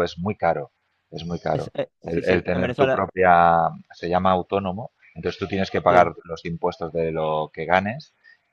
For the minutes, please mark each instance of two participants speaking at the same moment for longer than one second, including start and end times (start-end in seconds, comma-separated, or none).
1.5-3.1